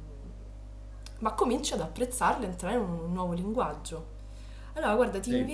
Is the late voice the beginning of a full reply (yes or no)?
no